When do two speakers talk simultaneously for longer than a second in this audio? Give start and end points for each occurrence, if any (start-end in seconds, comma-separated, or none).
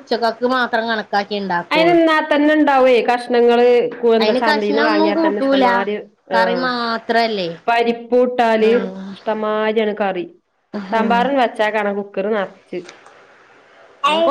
4.2-5.7